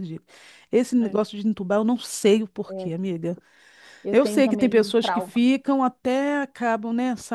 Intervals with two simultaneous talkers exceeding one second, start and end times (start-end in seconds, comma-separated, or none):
4.1-5.5